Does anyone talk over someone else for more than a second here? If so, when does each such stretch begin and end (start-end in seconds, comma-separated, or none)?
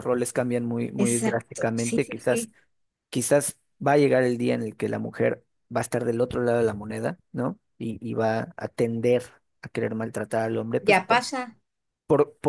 1.0-2.5